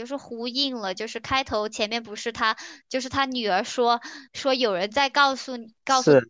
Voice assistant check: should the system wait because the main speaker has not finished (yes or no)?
yes